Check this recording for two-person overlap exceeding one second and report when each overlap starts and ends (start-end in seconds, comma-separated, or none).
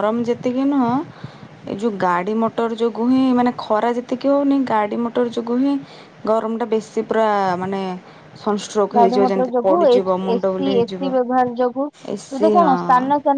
9.0-11.0